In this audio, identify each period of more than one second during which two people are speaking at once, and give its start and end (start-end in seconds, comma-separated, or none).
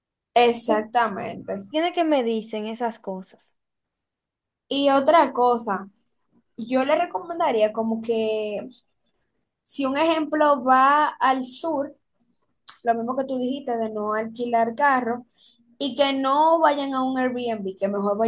none